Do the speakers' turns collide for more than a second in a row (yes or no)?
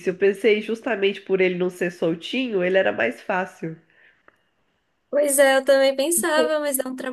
no